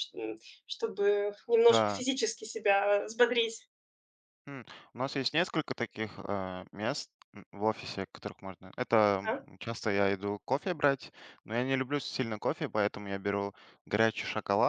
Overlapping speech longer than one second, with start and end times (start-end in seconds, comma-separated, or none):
none